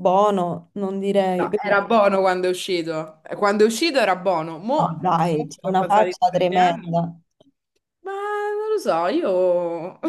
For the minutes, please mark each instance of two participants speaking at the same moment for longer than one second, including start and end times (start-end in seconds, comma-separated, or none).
4.8-6.9